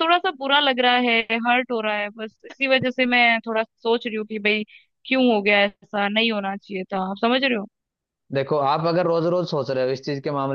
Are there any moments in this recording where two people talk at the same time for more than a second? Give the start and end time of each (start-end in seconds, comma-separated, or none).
none